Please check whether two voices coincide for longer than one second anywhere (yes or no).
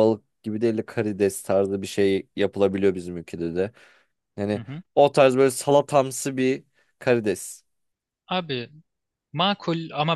no